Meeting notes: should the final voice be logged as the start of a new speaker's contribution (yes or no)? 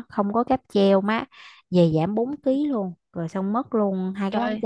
no